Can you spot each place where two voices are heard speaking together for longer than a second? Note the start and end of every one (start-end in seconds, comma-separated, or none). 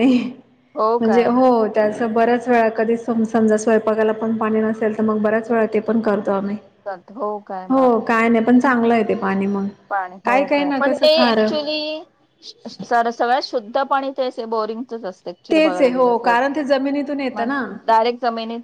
15.5-17.6